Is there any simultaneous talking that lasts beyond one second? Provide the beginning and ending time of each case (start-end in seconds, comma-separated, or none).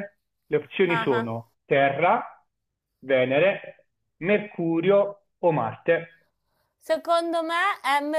none